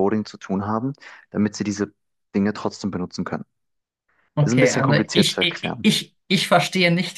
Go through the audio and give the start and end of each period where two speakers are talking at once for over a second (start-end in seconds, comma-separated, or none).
4.4-5.9